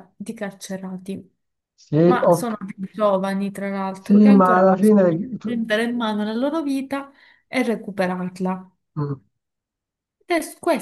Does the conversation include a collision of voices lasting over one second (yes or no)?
yes